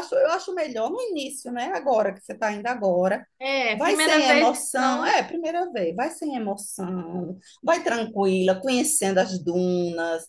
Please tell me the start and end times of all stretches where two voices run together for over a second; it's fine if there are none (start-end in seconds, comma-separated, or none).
3.7-5.2